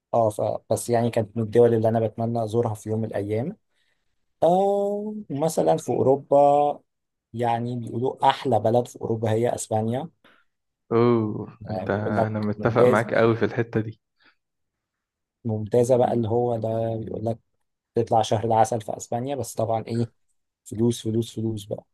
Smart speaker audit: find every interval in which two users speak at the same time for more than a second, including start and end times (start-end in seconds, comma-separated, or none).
11.7-13.0